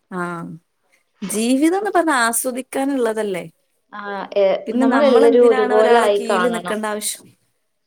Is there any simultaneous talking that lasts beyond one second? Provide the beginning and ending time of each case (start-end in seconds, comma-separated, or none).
4.7-6.8